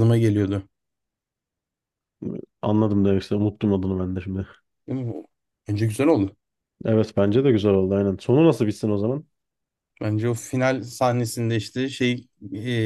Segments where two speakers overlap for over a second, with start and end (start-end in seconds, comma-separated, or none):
none